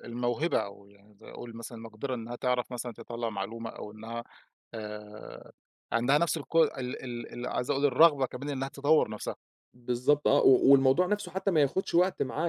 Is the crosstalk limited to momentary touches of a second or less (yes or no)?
yes